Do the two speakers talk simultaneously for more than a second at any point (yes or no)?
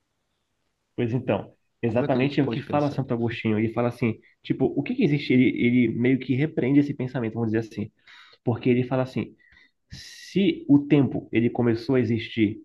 yes